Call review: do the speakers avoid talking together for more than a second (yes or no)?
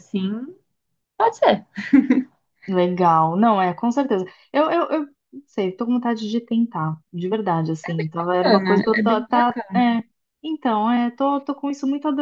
no